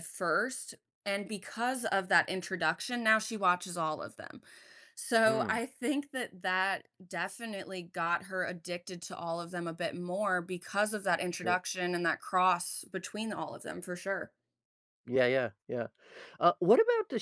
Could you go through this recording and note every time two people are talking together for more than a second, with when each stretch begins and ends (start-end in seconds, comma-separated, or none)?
none